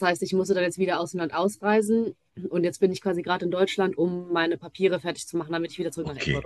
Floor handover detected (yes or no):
yes